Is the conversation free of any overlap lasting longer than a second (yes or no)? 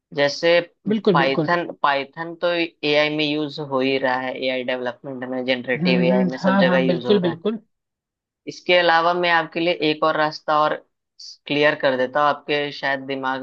no